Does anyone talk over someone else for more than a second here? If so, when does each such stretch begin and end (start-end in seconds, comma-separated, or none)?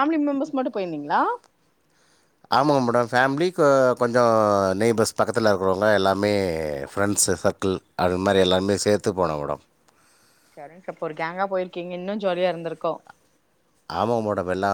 none